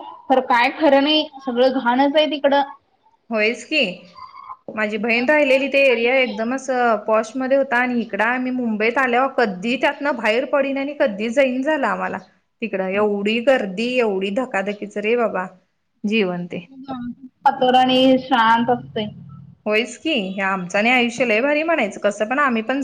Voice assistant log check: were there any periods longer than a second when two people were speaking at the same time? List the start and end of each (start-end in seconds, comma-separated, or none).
4.8-6.5